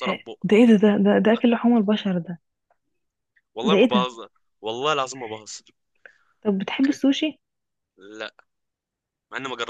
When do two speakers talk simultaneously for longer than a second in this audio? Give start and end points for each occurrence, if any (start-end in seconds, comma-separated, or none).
none